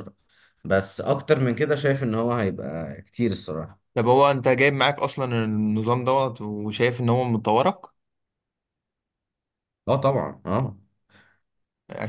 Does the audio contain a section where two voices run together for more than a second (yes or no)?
no